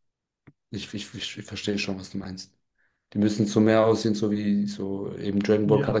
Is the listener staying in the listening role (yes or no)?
yes